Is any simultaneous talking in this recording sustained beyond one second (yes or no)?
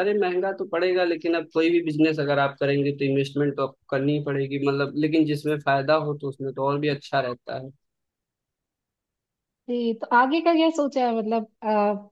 no